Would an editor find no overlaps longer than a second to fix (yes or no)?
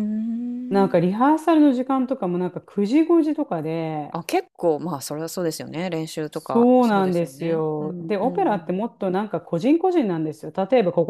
no